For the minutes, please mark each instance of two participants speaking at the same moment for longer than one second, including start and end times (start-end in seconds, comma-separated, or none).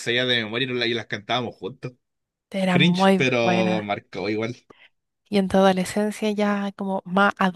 2.7-3.9